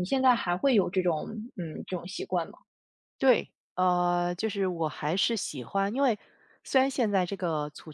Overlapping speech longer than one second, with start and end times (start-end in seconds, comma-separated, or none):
none